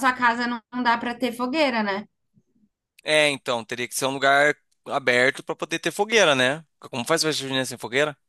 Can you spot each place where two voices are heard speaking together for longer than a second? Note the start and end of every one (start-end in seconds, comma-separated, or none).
none